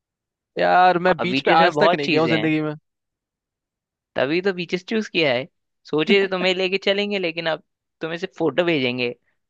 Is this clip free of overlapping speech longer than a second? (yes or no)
no